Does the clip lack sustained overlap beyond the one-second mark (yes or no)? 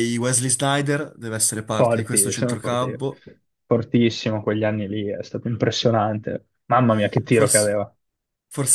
no